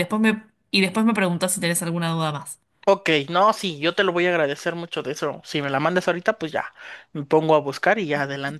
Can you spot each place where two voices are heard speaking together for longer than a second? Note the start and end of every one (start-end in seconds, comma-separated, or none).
none